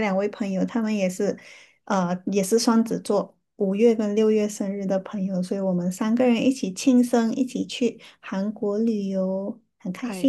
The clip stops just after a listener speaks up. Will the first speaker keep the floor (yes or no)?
no